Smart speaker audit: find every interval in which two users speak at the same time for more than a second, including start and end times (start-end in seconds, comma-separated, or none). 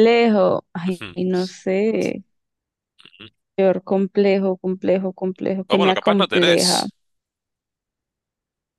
5.7-6.9